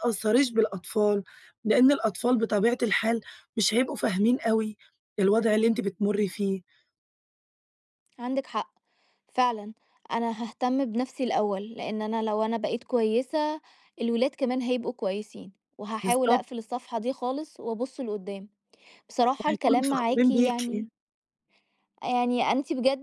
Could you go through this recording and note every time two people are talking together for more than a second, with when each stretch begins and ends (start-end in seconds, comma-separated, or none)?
19.4-20.9